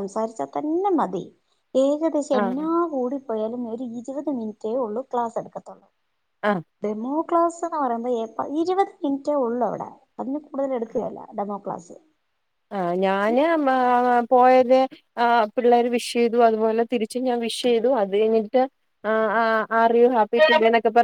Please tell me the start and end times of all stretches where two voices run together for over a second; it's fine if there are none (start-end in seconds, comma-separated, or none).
none